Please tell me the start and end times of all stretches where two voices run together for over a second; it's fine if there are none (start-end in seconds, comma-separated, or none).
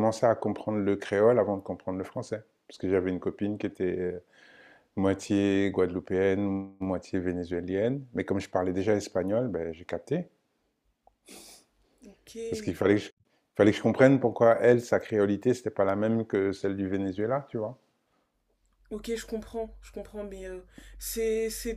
none